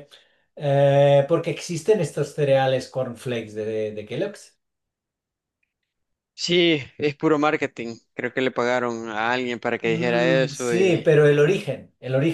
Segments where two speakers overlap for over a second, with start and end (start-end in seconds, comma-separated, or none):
9.8-11.1